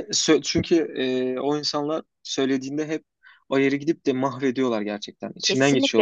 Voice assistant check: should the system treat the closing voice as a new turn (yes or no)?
yes